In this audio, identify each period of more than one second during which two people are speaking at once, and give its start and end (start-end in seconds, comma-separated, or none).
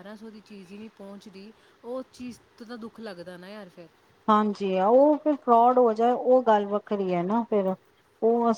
none